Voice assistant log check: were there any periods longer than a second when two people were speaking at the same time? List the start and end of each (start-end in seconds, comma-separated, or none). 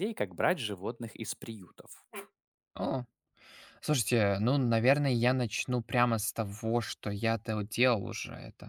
none